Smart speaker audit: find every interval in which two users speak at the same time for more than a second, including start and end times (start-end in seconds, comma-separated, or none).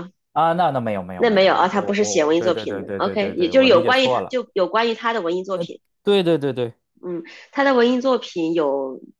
1.2-4.4